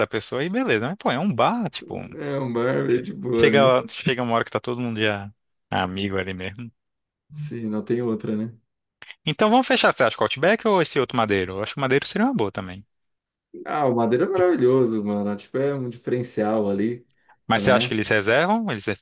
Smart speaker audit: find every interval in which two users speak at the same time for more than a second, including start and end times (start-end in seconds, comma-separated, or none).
none